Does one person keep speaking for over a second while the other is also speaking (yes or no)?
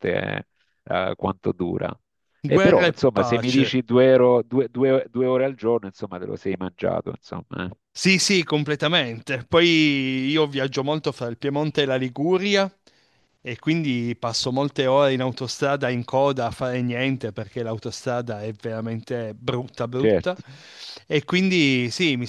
yes